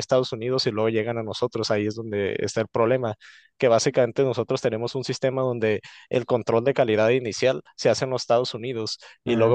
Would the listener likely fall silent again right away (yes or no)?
yes